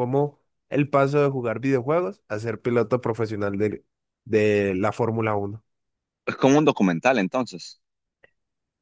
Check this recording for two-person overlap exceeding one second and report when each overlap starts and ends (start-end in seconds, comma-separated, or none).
none